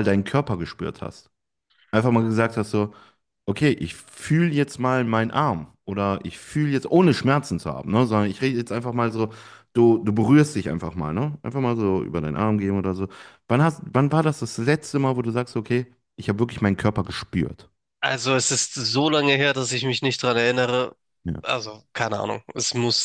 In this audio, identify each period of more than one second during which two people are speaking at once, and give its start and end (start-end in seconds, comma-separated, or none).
none